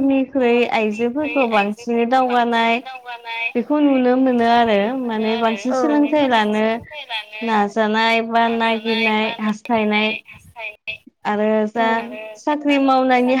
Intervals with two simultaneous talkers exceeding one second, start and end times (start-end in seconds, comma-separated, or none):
0.8-2.7